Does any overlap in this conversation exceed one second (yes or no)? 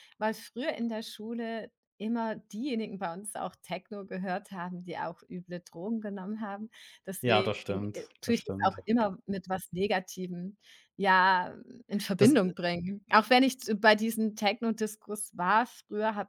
yes